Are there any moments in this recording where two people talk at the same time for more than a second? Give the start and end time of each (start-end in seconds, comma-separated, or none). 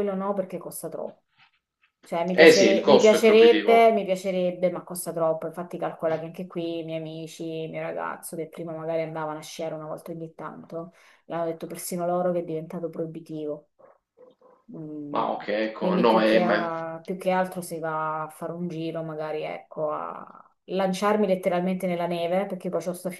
2.3-3.8, 15.1-16.7